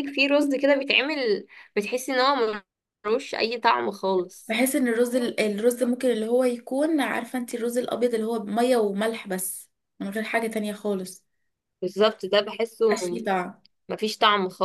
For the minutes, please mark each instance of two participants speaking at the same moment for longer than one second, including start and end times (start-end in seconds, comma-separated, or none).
none